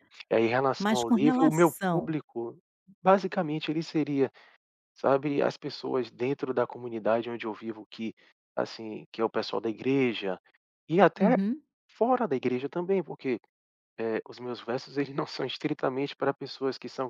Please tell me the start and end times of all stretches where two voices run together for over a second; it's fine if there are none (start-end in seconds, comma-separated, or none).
0.8-2.1